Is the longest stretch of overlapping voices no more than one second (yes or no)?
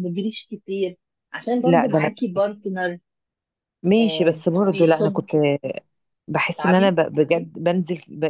no